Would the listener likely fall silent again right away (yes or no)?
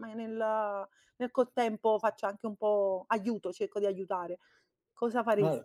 no